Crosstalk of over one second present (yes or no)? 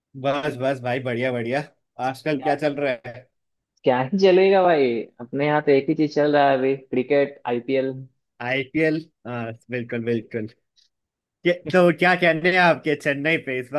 no